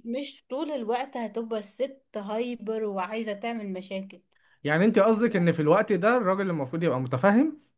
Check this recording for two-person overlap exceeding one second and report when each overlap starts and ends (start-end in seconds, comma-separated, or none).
none